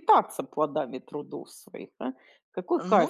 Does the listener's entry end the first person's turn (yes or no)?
no